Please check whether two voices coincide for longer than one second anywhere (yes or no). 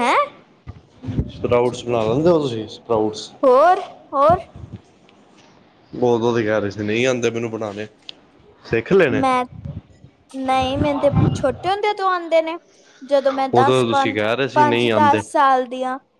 yes